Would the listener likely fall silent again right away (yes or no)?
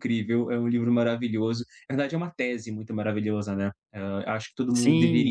no